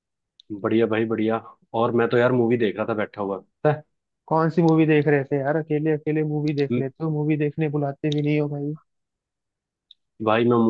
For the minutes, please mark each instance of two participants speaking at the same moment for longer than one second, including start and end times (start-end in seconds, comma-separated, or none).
none